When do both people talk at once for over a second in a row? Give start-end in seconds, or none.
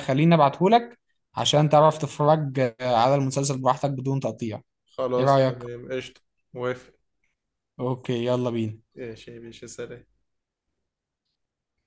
none